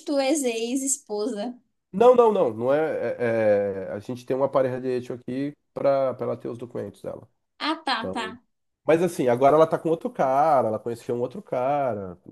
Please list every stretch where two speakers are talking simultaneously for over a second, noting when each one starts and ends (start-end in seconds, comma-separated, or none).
none